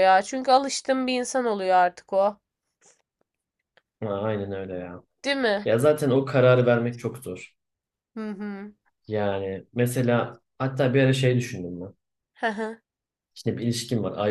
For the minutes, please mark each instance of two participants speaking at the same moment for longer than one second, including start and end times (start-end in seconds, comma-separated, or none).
none